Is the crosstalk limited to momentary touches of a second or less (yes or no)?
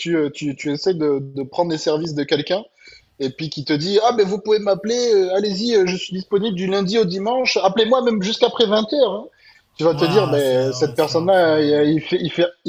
no